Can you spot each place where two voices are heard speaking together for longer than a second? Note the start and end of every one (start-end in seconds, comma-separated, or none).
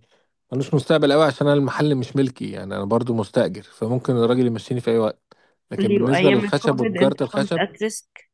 5.8-7.6